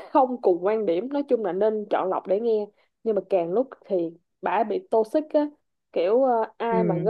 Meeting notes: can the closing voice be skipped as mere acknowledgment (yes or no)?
yes